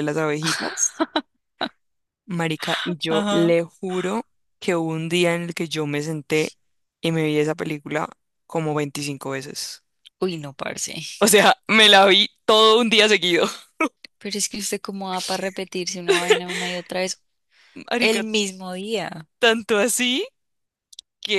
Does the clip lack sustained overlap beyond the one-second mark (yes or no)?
yes